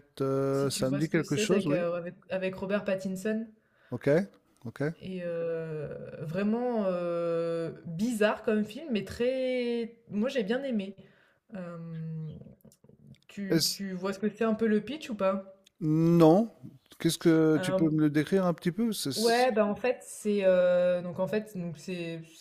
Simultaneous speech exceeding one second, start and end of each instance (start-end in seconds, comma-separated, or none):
0.5-1.8